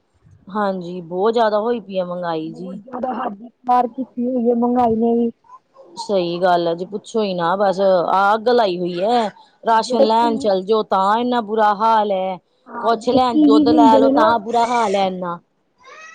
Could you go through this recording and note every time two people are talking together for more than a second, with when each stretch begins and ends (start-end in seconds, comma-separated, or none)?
12.8-14.3